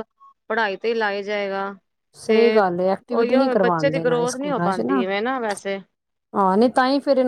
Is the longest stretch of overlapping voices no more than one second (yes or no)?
no